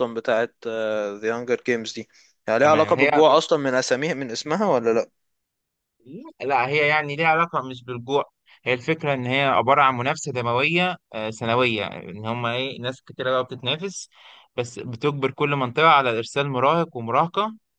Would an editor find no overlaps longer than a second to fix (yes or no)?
yes